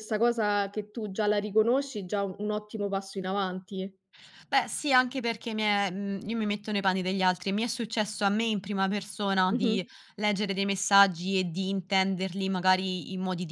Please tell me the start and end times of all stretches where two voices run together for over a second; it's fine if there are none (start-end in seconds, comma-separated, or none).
none